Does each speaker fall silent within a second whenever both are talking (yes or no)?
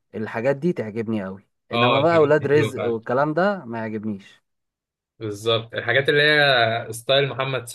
no